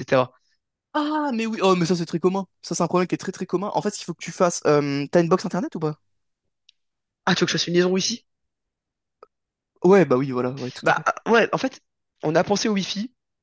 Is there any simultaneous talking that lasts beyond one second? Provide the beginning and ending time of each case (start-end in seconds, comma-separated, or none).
none